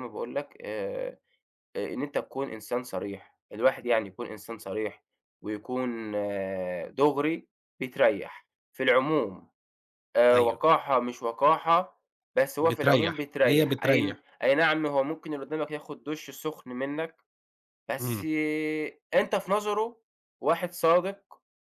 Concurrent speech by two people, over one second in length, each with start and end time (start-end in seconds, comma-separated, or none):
12.6-14.2